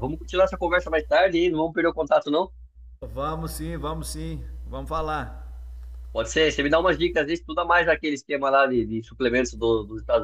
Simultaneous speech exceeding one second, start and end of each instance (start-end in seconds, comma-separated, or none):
none